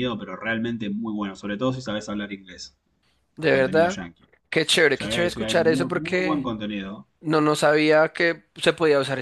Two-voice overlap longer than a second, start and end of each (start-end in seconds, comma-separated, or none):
4.9-6.5